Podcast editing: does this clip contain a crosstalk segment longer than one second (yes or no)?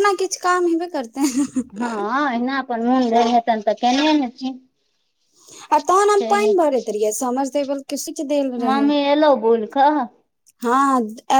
no